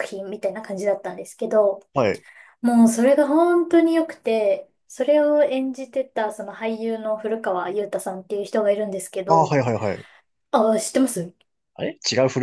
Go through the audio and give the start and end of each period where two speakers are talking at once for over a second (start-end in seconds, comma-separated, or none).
none